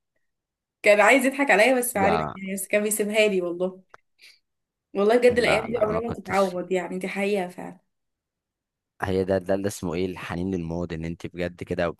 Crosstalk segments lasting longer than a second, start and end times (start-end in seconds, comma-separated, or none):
5.3-6.6